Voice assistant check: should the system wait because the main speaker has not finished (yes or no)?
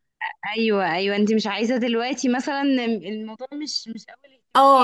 no